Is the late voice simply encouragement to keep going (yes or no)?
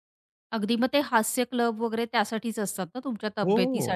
yes